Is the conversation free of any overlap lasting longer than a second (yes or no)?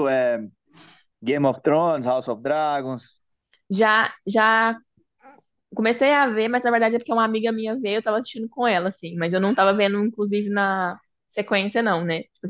yes